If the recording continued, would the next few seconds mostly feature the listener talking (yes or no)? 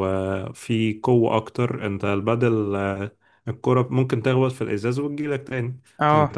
no